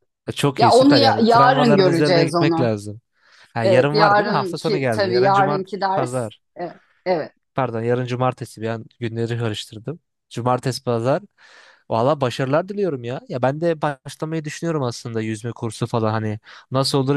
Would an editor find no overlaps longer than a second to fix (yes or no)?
no